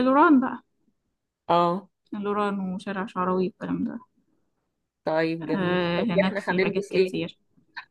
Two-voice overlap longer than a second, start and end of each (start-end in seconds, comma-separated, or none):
5.4-7.2